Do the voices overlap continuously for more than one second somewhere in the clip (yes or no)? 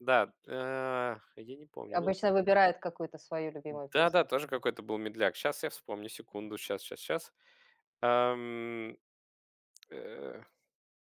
no